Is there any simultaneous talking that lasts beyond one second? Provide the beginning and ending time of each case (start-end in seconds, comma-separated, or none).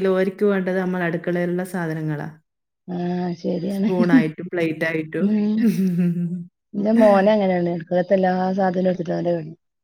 none